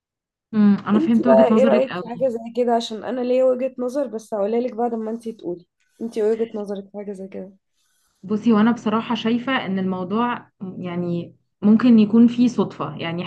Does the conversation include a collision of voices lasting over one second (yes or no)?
yes